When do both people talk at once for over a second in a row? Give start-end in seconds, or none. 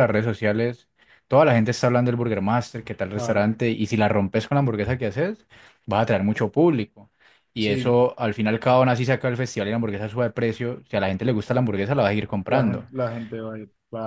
none